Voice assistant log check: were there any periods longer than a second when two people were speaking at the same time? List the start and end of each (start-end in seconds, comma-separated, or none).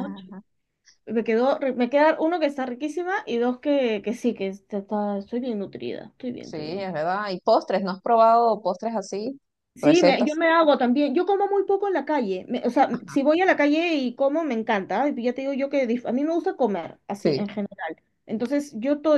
none